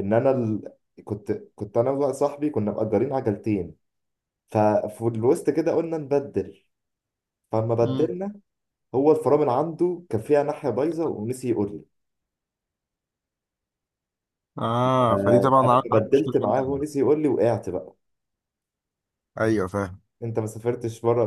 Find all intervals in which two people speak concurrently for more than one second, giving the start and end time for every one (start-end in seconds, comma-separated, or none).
15.1-16.9